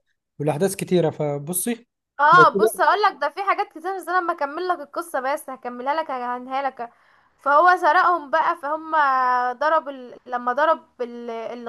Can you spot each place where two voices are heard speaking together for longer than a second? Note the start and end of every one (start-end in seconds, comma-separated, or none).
none